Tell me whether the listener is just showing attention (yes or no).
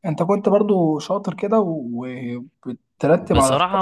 no